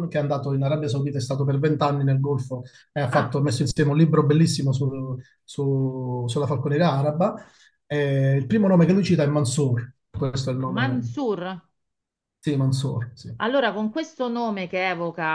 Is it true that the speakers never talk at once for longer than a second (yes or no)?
yes